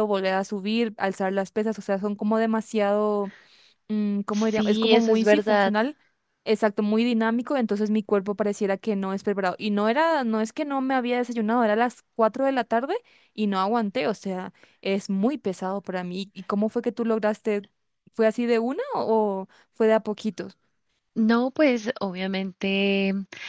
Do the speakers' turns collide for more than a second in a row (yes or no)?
yes